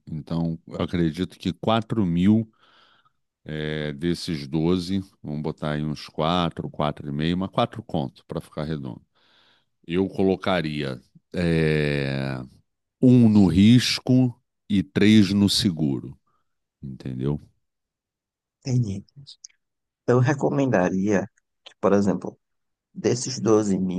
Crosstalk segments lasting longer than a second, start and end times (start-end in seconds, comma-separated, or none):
none